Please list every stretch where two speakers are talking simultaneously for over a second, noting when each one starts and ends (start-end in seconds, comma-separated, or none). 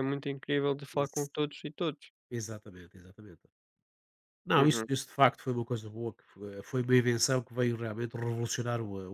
none